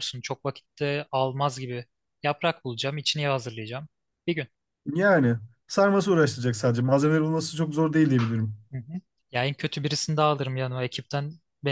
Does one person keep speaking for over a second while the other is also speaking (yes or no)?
no